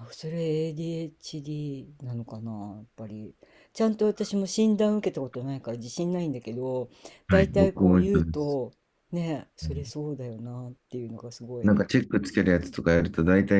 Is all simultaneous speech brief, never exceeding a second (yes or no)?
no